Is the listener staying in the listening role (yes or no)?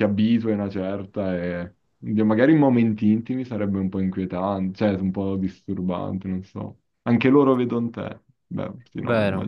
no